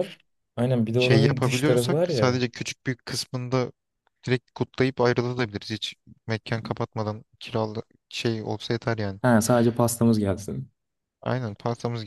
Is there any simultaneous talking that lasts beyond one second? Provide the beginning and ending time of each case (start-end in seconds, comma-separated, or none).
0.9-2.5